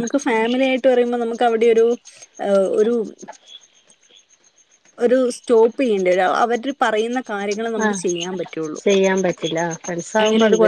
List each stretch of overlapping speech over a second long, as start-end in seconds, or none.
none